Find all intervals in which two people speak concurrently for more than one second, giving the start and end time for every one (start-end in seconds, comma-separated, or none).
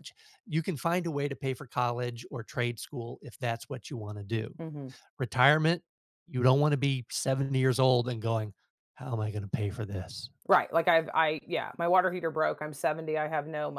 none